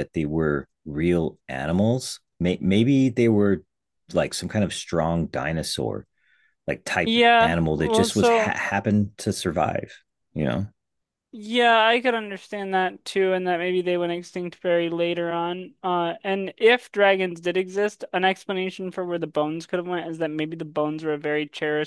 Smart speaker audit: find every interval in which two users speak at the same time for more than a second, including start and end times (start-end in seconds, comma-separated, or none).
7.0-8.6